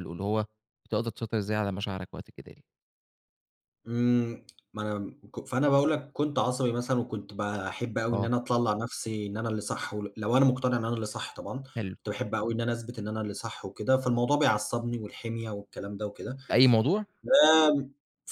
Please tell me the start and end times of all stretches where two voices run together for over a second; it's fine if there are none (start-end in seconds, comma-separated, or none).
none